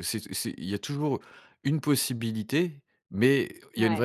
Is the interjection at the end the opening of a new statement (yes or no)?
no